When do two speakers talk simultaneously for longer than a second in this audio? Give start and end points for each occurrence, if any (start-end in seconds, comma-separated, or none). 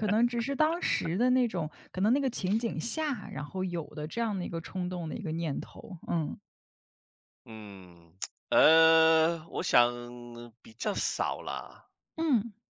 none